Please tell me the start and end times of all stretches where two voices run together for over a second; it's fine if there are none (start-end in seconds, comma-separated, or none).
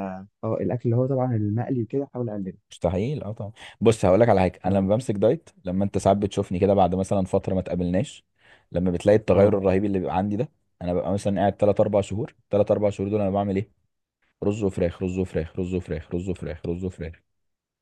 none